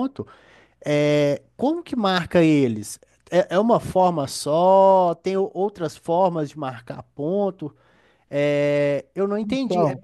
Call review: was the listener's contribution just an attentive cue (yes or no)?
yes